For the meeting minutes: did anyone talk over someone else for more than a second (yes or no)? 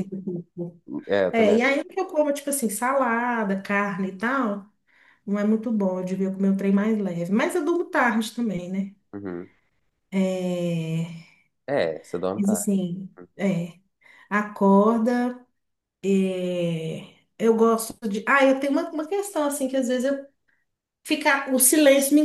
no